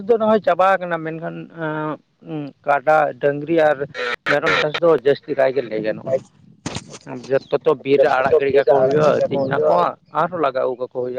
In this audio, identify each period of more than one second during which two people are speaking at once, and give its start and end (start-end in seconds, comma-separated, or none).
8.0-9.7